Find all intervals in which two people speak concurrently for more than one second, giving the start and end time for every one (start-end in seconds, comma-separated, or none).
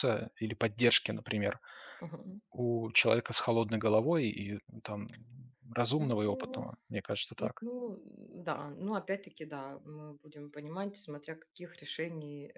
none